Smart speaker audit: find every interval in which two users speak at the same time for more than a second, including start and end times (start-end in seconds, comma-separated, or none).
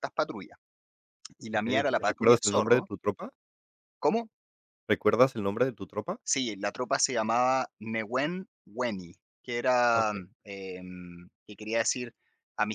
1.5-2.9